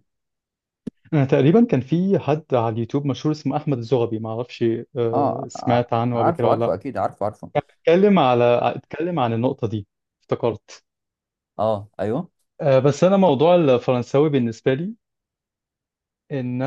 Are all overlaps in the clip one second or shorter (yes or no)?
no